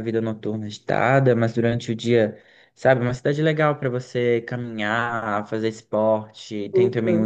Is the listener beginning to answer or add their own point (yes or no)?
no